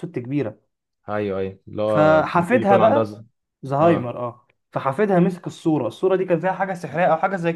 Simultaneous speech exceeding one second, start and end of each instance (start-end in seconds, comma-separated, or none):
1.9-3.1